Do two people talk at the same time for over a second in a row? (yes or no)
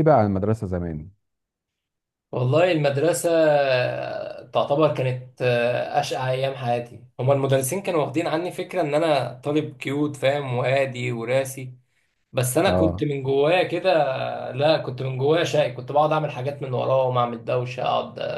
no